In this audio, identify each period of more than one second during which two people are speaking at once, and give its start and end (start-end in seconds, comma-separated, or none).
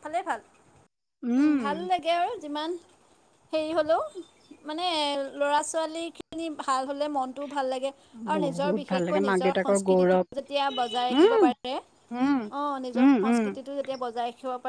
8.4-10.2